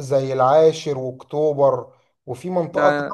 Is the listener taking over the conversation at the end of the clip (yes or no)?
no